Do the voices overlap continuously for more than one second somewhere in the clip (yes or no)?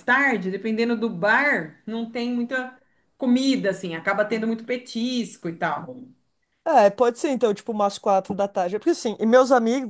no